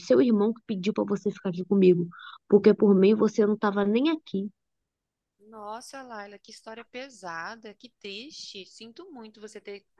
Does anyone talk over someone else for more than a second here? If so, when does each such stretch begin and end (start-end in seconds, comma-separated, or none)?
none